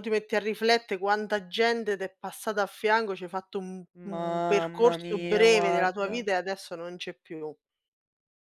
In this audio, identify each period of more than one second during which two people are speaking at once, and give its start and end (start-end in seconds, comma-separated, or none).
4.1-6.1